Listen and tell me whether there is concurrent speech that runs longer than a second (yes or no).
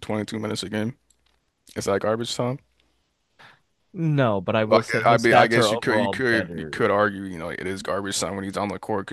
yes